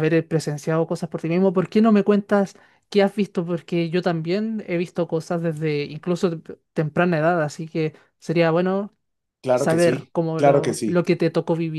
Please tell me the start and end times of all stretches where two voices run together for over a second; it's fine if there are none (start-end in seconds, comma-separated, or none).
9.5-11.0